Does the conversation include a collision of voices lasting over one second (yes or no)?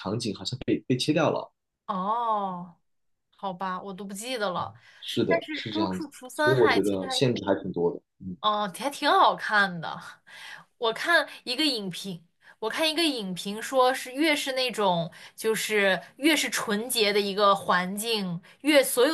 yes